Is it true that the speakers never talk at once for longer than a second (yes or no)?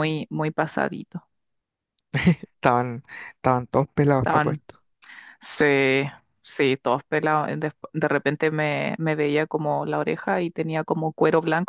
yes